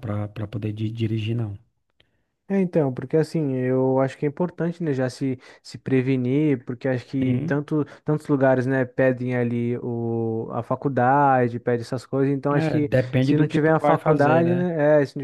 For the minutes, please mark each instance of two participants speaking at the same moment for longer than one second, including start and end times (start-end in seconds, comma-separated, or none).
12.5-14.7